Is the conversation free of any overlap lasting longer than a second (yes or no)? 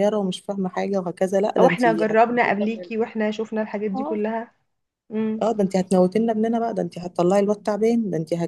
no